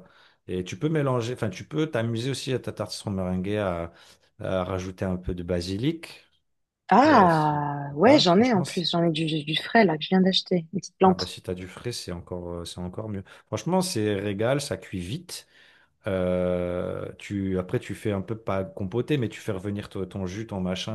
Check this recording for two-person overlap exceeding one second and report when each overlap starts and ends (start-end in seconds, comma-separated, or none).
7.0-8.8